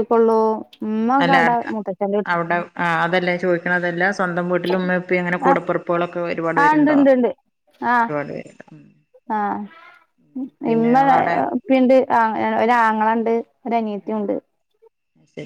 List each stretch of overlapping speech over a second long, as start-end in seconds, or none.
none